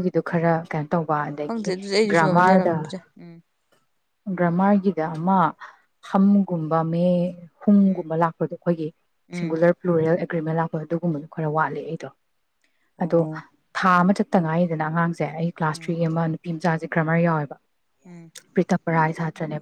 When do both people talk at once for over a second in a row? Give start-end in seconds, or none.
1.4-2.9